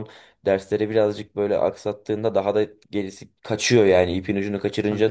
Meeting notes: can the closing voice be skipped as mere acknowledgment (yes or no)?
no